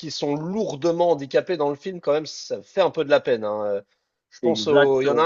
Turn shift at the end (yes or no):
no